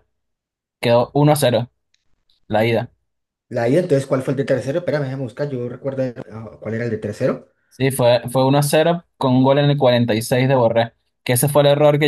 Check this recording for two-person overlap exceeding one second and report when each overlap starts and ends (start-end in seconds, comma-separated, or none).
none